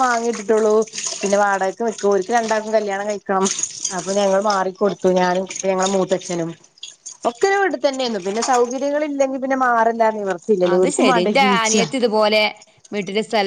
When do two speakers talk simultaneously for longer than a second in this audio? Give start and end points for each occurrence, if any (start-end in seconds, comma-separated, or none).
none